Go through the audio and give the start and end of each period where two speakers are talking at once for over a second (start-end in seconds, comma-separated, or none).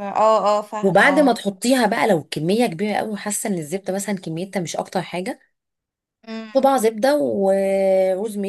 none